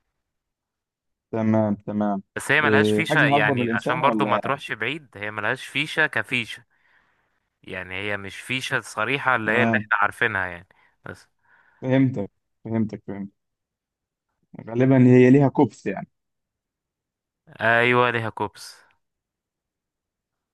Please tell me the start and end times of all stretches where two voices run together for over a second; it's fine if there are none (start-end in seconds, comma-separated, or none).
2.6-4.4